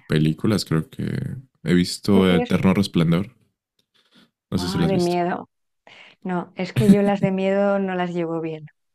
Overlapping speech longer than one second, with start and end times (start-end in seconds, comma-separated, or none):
none